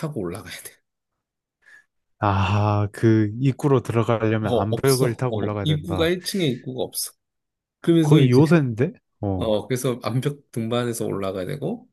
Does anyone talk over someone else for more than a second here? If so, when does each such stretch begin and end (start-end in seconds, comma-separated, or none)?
4.5-6.1